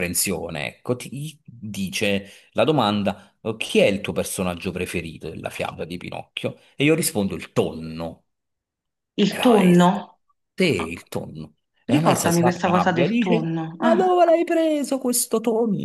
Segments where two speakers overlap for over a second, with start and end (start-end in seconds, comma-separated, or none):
11.9-14.1